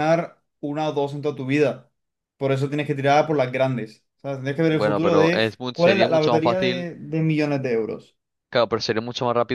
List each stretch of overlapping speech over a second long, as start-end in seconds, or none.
4.7-6.9